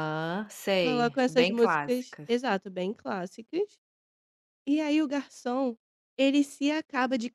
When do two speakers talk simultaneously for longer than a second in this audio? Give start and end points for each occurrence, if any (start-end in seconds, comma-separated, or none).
0.8-2.3